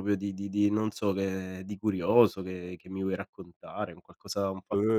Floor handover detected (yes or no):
yes